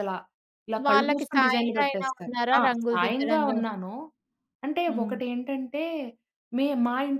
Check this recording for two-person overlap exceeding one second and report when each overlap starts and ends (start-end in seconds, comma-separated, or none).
0.9-3.8